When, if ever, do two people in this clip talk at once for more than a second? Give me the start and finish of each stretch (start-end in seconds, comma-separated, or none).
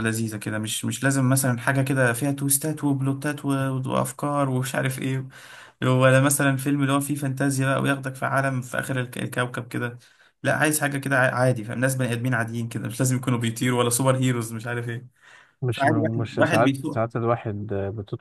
15.7-17.1